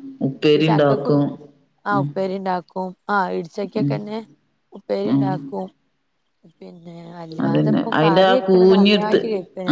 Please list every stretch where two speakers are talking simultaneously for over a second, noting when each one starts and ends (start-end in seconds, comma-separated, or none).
7.5-9.2